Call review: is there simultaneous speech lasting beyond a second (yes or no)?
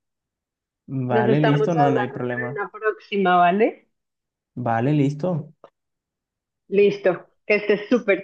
yes